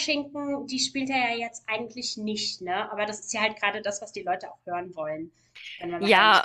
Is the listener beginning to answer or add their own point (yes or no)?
yes